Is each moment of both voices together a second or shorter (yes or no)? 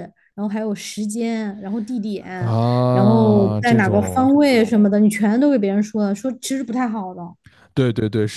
no